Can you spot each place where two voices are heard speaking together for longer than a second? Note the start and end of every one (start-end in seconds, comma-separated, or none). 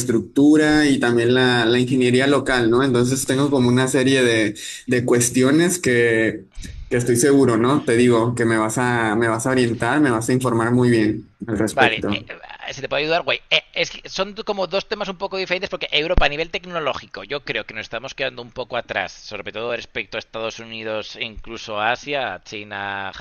none